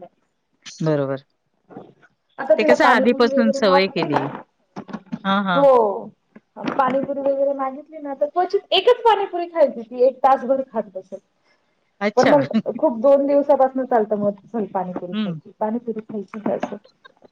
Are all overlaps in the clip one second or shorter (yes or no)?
no